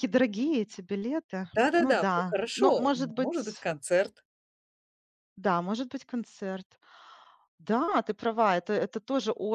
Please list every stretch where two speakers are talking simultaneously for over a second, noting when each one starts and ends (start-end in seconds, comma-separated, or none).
1.5-3.7